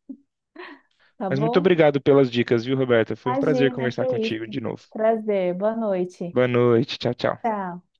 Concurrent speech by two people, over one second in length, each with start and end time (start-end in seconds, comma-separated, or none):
3.2-4.5